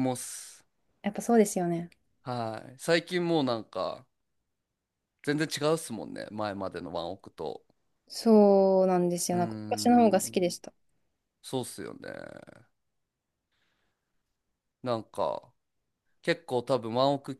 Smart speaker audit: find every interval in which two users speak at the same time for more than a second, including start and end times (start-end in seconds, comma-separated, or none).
9.3-10.6